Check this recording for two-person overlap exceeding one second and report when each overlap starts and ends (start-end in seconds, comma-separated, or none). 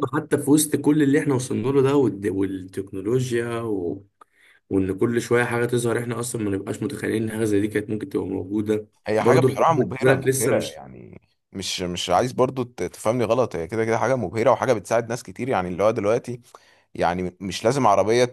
9.1-10.8